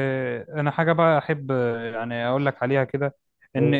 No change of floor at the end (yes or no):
yes